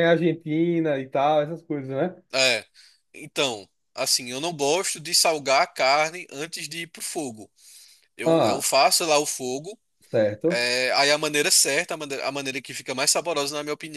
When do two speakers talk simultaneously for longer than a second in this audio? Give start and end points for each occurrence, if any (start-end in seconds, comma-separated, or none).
none